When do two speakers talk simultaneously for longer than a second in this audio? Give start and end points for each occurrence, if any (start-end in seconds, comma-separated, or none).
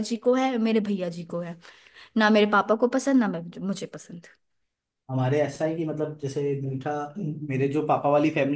none